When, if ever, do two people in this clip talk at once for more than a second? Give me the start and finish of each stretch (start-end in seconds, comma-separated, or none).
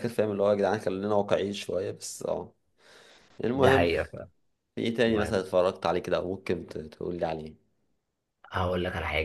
none